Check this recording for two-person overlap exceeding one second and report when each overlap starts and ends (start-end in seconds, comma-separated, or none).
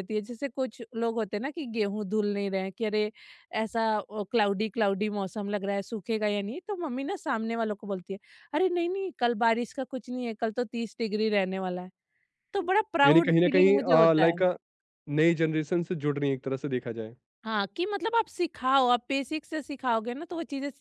13.1-14.4